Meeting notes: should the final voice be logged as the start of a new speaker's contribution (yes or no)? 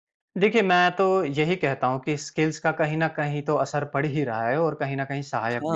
no